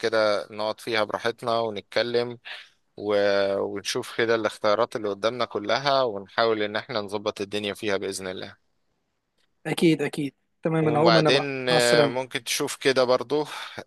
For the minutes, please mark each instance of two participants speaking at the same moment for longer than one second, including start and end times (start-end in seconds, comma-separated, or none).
10.8-12.2